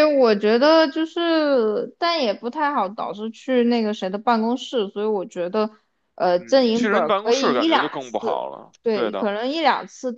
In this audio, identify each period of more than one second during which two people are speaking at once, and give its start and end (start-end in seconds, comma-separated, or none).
6.4-9.3